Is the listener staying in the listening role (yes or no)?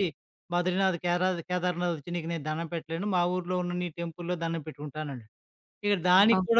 yes